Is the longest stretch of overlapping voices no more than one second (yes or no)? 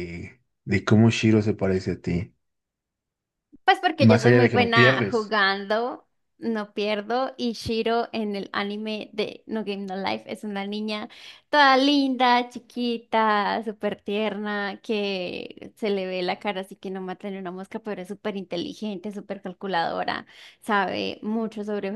no